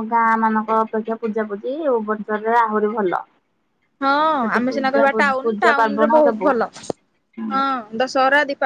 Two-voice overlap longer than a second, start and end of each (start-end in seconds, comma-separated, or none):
4.6-6.5